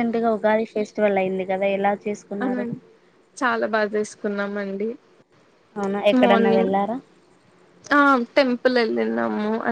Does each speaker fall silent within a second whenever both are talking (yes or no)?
yes